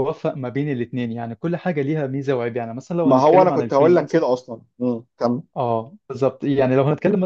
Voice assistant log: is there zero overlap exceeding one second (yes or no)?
no